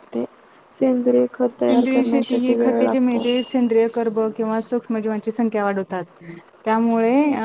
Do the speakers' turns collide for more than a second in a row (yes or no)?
yes